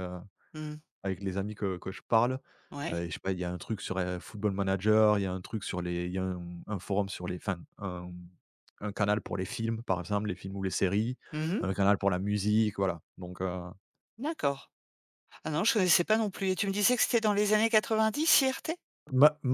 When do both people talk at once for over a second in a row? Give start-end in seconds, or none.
none